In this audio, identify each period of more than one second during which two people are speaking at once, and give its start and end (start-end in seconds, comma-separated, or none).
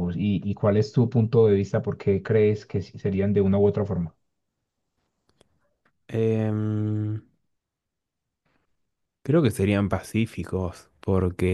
none